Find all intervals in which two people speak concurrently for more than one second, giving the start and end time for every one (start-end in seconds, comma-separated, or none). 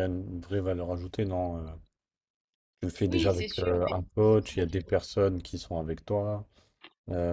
3.0-4.9